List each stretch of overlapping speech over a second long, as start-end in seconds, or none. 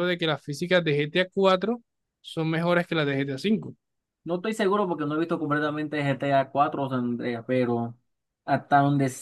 none